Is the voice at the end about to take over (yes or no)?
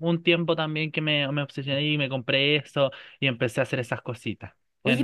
yes